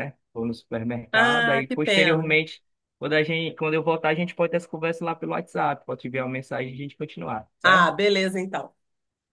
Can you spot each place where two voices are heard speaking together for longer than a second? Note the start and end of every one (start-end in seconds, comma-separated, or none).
1.1-2.3